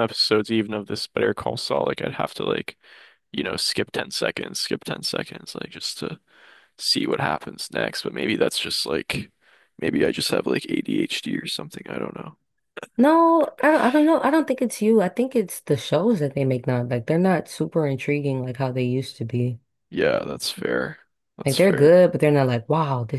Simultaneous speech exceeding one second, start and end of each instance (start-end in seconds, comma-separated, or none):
none